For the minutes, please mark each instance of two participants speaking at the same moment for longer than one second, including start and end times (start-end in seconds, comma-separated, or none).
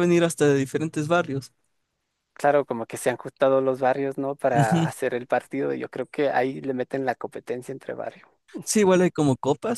none